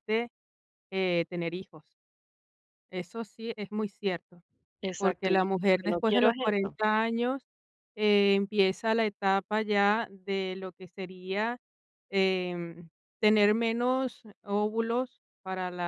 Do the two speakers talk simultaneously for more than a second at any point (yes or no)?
yes